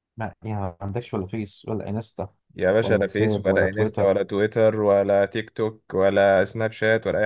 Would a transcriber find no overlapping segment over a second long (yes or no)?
no